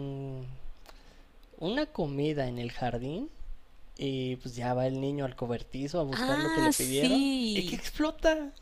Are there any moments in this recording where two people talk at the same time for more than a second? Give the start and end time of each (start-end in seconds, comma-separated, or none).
6.1-7.8